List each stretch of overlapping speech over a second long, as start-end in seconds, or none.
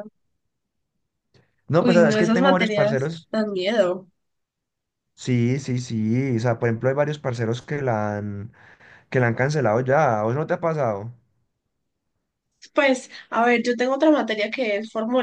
1.8-3.3